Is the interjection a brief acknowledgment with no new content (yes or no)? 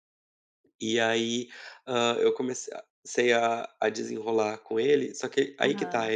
yes